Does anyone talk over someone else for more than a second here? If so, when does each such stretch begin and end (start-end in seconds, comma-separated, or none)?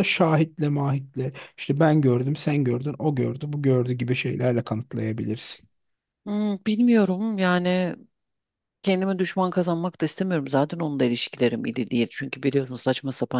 none